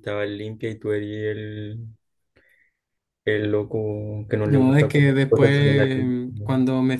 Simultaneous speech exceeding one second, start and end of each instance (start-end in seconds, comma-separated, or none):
4.4-6.2